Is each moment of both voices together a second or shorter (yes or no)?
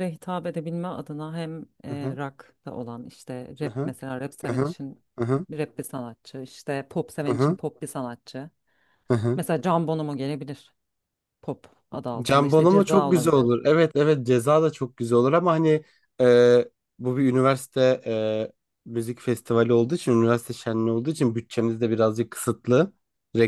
no